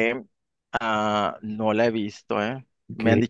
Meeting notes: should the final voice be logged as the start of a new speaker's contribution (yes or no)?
no